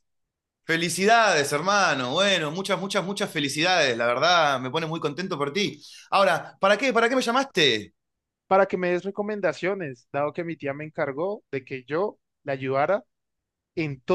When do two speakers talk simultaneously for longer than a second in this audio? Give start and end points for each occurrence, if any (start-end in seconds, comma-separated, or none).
none